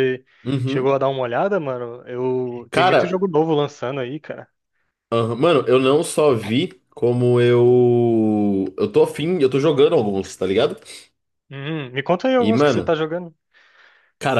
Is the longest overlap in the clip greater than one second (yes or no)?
no